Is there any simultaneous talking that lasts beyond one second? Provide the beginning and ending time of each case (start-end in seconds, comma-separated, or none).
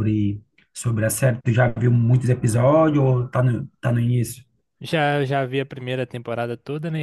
none